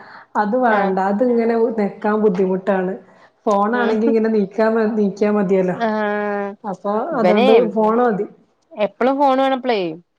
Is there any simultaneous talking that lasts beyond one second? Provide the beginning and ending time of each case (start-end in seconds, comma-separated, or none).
none